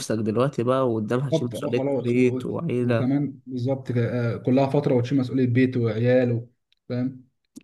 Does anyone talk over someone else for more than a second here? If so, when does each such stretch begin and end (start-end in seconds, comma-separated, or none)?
1.3-3.1